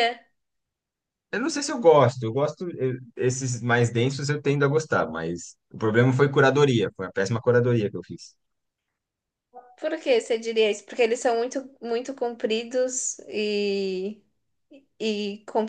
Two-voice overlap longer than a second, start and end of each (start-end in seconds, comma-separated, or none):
none